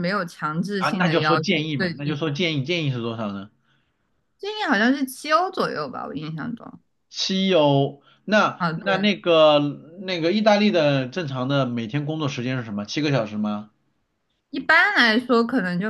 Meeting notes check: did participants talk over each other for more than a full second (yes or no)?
yes